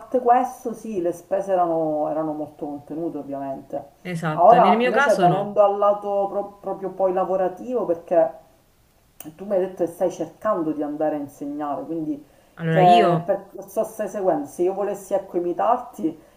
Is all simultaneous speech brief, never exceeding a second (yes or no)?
no